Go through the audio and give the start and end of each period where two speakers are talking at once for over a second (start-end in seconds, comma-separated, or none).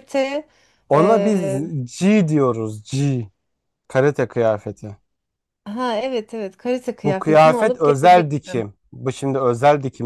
7.0-8.7